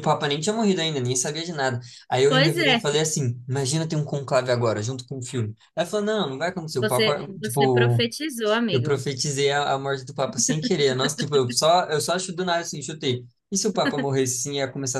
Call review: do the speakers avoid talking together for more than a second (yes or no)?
no